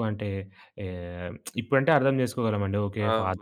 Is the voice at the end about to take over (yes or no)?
yes